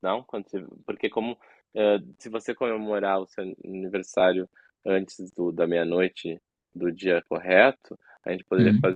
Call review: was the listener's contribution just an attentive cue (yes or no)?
yes